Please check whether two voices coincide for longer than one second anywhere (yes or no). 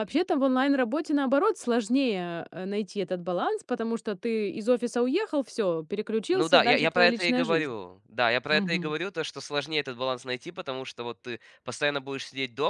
yes